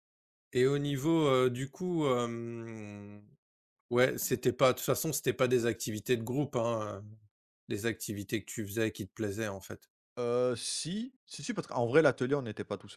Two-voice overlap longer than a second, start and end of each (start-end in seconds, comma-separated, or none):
none